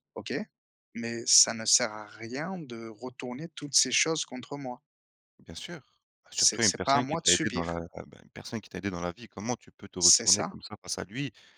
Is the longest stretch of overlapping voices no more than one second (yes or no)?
no